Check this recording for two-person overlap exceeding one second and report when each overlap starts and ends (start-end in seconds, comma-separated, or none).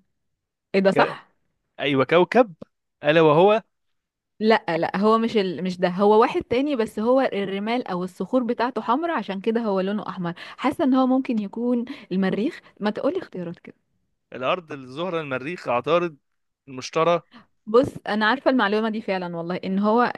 none